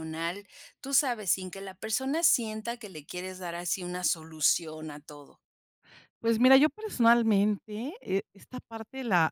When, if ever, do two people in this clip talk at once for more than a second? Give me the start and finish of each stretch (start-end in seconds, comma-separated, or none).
none